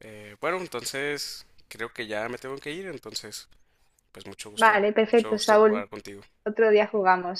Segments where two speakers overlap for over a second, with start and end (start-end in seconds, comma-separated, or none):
4.5-5.9